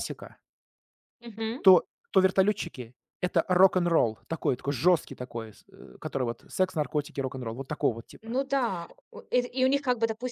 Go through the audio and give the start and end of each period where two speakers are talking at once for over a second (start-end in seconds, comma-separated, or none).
none